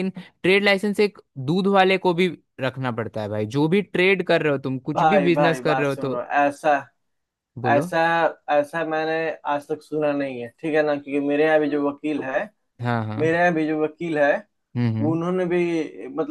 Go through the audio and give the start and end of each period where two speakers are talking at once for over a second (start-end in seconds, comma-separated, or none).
4.9-6.1